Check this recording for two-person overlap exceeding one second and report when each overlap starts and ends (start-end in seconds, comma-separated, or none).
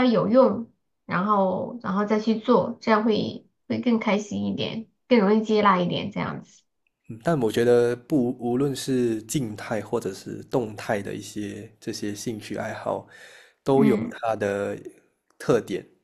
none